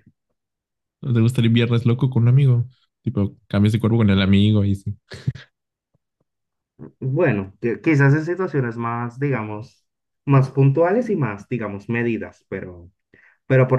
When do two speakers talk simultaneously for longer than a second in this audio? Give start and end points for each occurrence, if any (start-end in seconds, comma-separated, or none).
none